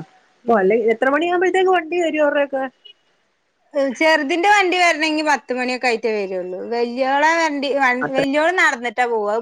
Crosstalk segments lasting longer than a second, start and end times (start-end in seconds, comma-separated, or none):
none